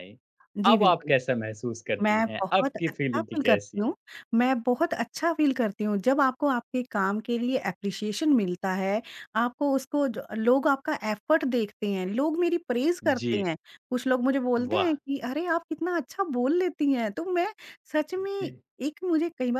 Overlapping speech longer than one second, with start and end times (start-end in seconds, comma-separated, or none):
2.0-3.9